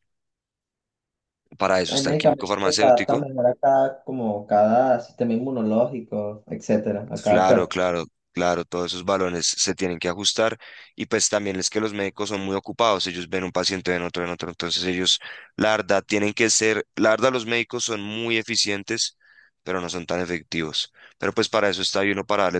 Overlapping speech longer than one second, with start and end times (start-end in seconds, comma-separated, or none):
1.9-3.2